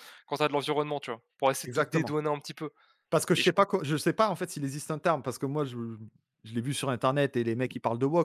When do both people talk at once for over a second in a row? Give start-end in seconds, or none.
none